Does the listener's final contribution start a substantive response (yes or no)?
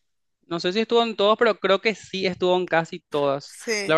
no